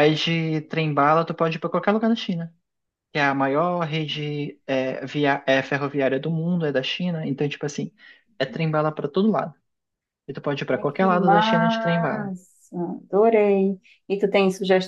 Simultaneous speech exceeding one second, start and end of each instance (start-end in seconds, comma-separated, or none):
10.7-12.3